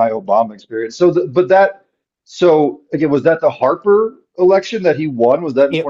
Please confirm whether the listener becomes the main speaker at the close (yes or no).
yes